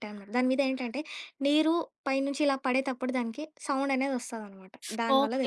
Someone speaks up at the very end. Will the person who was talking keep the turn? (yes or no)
no